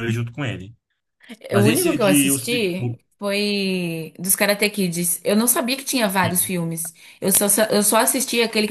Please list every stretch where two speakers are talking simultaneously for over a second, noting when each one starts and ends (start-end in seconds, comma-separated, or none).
1.6-3.0